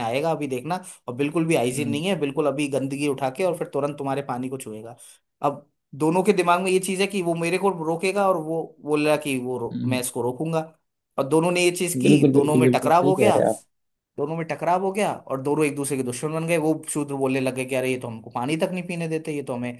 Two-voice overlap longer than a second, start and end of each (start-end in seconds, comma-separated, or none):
12.0-13.4